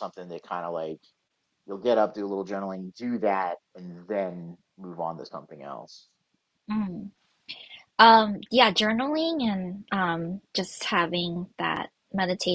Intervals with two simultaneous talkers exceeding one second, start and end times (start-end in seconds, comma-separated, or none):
none